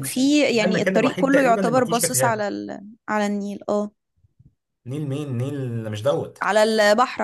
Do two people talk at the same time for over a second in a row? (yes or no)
yes